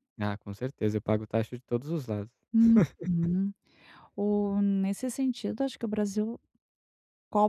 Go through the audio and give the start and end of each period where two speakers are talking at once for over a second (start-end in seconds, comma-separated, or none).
none